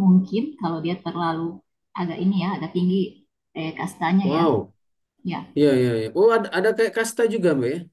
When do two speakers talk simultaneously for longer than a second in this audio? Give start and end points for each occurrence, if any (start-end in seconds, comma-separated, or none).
none